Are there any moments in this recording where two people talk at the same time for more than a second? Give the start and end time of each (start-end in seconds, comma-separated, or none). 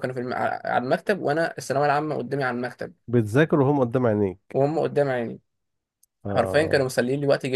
none